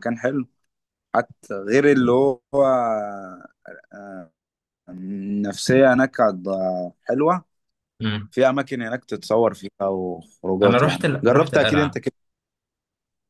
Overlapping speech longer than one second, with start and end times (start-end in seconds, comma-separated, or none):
10.6-12.0